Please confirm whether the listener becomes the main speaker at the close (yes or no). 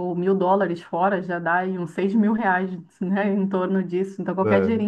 no